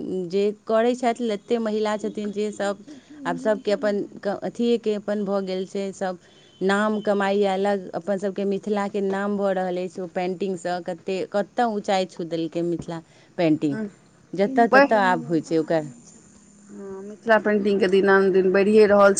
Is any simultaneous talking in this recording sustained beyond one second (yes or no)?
no